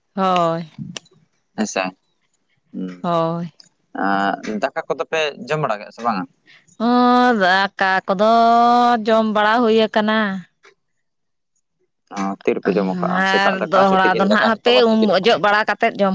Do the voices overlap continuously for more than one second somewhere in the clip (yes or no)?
yes